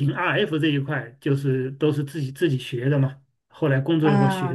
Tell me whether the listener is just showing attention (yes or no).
no